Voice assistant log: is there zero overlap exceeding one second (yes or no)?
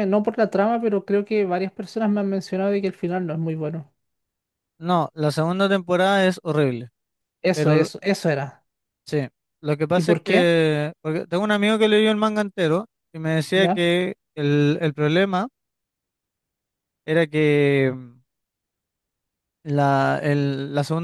yes